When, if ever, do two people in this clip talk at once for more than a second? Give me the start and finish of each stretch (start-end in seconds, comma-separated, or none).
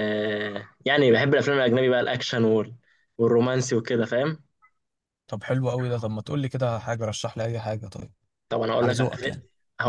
none